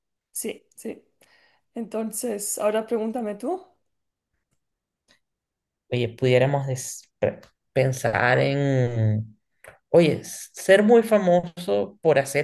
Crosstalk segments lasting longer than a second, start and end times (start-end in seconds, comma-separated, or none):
none